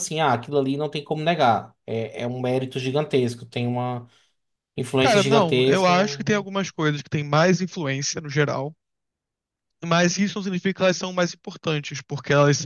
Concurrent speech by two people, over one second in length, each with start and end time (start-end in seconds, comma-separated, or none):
5.0-6.5